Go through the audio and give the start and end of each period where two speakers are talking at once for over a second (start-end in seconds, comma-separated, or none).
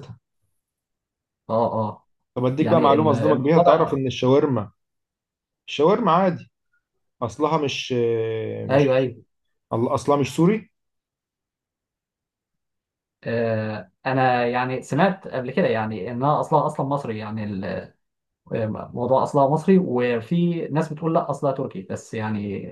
2.6-4.0